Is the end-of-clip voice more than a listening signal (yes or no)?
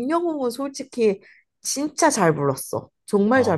yes